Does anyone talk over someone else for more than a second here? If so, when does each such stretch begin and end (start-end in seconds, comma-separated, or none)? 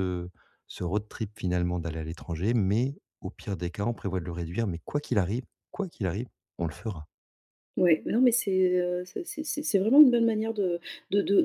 none